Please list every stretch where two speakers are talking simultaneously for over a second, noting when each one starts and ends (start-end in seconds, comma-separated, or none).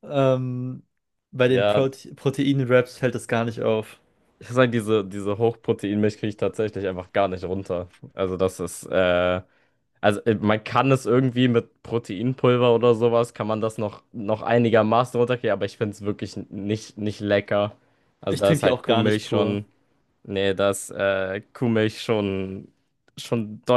18.3-19.6